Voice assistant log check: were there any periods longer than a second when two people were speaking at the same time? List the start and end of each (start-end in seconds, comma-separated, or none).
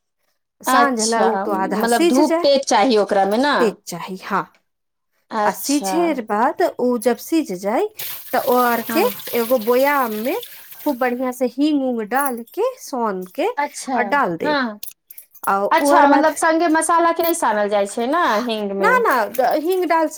0.8-2.5